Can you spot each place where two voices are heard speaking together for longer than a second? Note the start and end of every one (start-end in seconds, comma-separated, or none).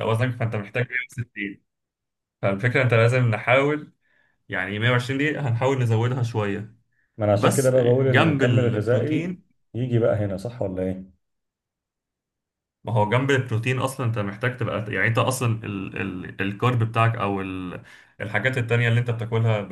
7.3-9.4